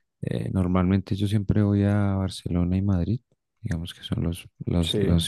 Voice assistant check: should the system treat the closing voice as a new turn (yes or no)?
no